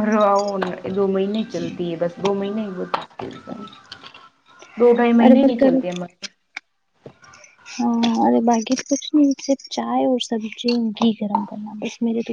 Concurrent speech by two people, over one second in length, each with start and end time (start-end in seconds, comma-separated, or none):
none